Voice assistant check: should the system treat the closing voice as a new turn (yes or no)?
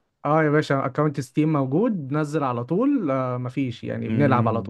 yes